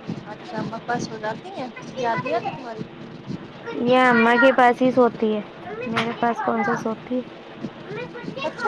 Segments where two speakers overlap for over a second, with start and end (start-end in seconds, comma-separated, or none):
none